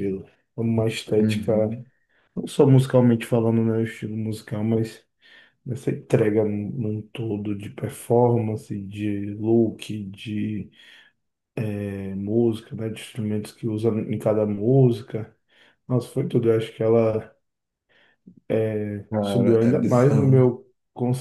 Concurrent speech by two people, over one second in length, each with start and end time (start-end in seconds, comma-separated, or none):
19.2-20.4